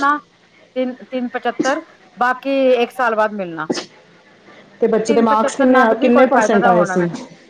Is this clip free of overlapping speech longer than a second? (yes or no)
no